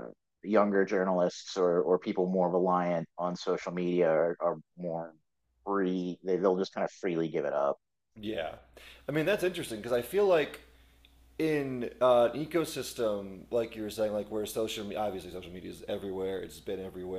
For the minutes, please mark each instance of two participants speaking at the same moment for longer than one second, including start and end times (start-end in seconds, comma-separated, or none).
none